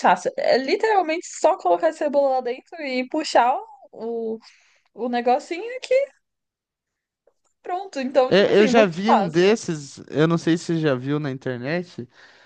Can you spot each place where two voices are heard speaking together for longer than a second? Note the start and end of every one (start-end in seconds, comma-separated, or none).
8.3-9.6